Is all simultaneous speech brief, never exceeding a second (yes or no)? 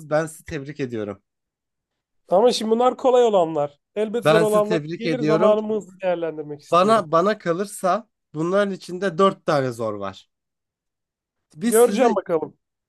no